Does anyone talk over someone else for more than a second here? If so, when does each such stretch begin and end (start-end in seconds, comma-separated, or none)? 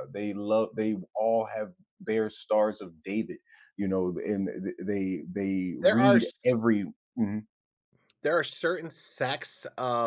none